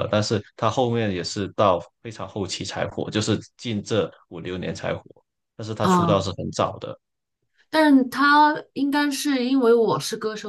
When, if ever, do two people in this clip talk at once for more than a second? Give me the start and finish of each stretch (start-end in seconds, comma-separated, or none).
none